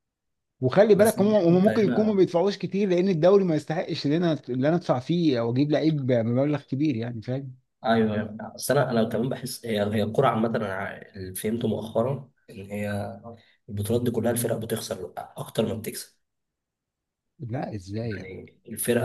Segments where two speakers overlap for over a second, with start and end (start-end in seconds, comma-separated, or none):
1.0-2.2